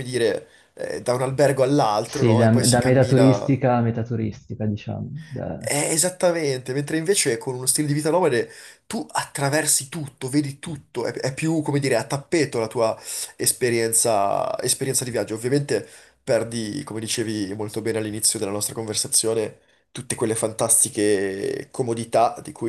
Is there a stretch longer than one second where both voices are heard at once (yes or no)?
yes